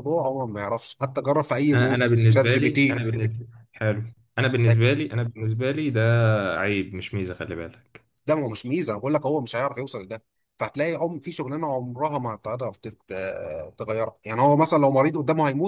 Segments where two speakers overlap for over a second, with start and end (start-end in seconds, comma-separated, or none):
1.7-3.1